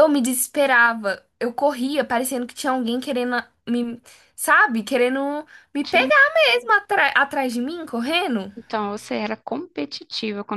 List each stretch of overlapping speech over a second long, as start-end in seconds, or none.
none